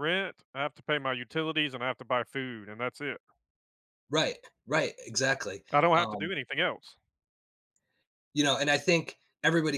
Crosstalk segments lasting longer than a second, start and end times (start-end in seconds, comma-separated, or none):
none